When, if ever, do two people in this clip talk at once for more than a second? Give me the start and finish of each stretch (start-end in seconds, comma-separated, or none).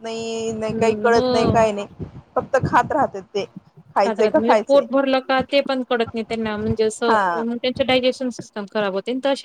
none